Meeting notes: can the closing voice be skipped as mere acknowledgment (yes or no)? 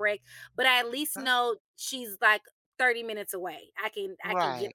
yes